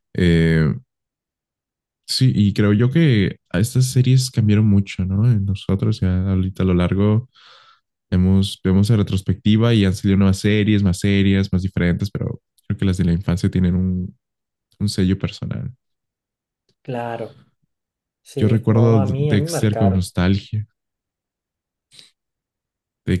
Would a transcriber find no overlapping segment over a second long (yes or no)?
no